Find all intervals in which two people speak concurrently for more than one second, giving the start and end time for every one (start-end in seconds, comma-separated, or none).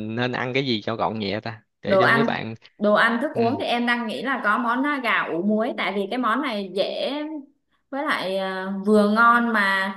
none